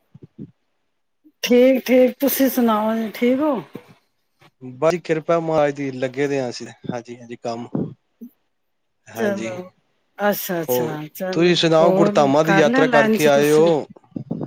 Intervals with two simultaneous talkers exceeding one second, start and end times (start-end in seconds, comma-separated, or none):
10.7-13.6